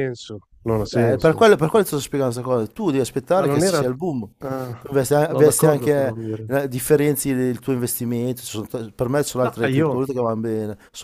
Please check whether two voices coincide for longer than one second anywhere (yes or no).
yes